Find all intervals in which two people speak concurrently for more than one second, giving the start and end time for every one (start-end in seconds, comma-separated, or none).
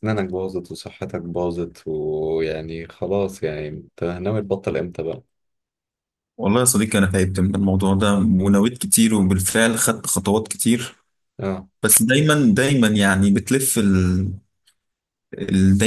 none